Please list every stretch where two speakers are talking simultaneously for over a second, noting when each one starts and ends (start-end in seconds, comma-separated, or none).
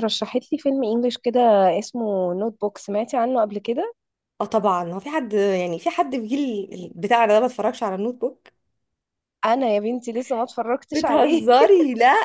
none